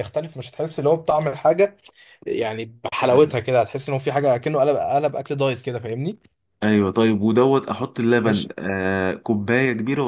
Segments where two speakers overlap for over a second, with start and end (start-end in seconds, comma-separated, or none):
none